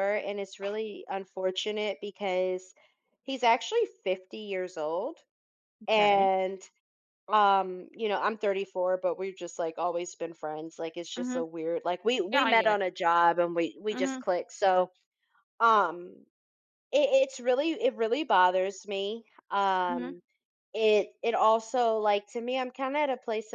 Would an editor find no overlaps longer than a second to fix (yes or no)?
yes